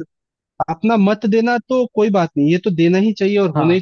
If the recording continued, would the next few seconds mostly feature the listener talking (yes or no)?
no